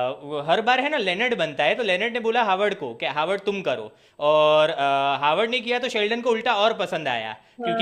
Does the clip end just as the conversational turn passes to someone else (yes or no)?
no